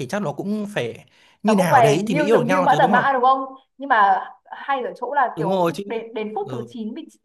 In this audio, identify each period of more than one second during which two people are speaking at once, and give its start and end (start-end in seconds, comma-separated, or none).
1.5-3.0